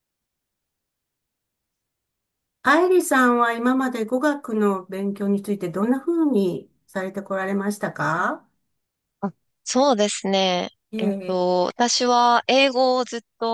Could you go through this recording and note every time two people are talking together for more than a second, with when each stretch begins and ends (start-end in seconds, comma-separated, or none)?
none